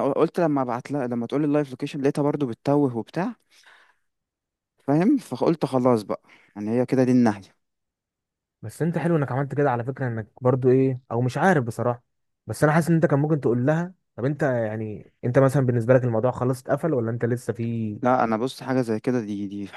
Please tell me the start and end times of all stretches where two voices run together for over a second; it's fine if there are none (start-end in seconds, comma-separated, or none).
none